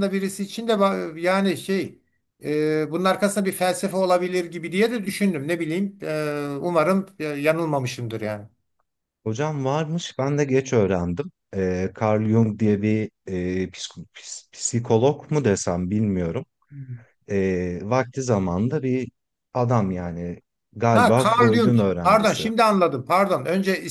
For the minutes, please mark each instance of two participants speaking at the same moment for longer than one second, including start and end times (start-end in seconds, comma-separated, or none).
20.9-22.5